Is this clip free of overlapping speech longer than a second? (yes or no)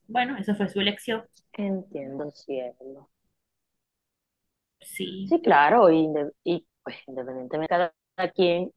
yes